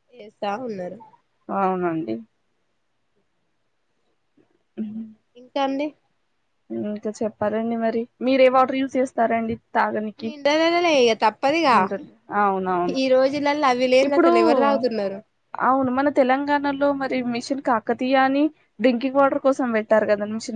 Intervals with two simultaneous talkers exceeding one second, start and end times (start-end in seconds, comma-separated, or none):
none